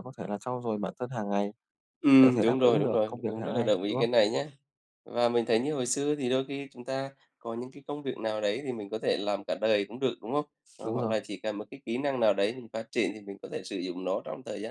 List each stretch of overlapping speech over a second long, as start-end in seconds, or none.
2.2-4.1